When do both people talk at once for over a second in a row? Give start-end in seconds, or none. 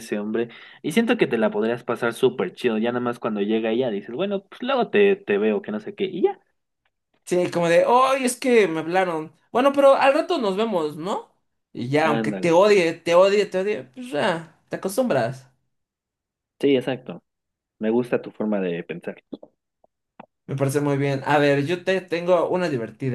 none